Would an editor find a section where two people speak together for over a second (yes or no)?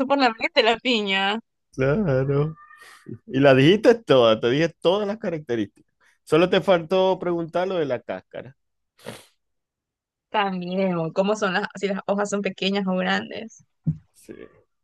no